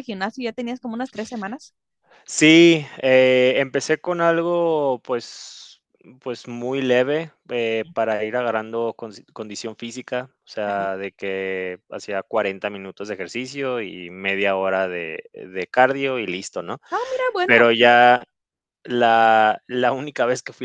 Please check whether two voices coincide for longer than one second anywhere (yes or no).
no